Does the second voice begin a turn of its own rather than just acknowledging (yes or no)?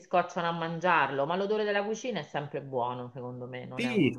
yes